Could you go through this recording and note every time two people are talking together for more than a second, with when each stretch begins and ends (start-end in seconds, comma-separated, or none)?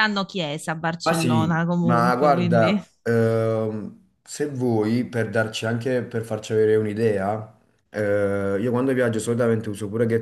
1.0-2.8